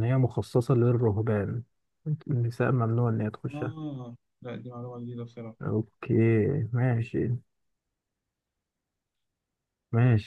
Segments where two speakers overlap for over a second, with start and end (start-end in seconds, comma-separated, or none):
none